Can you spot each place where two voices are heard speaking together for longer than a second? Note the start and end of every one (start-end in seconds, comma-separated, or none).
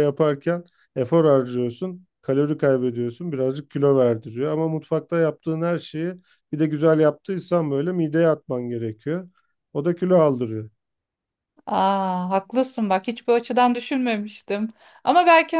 none